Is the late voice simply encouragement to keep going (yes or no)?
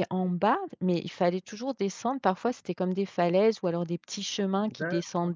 yes